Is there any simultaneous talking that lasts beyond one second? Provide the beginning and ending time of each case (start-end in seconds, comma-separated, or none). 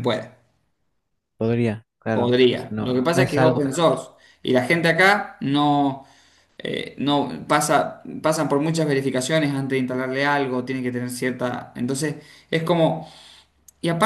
2.1-3.6